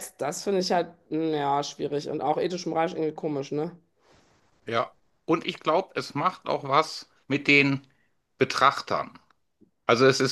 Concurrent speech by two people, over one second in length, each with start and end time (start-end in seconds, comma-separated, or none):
none